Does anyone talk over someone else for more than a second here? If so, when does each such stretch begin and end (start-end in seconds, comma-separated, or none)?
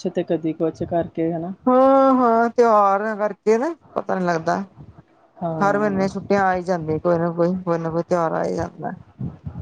none